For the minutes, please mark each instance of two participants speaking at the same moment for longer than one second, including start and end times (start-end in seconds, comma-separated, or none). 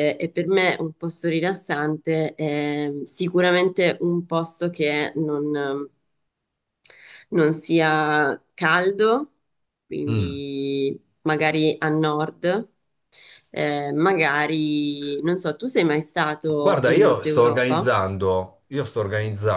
16.6-17.9